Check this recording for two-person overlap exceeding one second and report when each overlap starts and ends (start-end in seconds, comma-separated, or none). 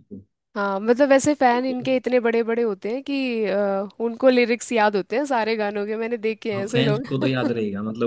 none